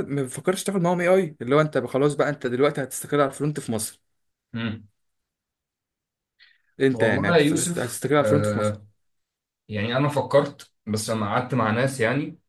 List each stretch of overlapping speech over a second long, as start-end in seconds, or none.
6.9-8.8